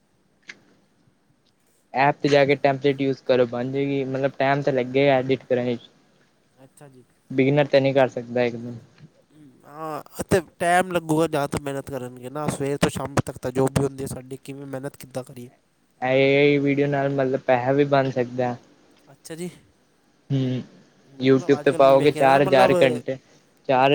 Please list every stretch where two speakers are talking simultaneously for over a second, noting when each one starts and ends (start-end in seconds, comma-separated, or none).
21.2-22.7